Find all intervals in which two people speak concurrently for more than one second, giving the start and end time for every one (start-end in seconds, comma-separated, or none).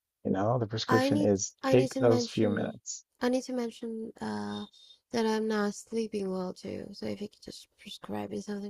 0.9-2.8